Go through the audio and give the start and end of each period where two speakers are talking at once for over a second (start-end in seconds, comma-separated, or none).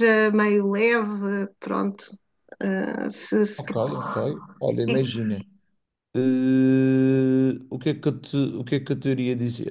none